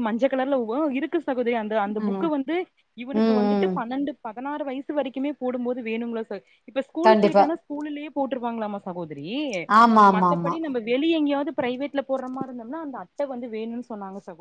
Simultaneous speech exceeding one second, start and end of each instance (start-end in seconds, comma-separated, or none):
none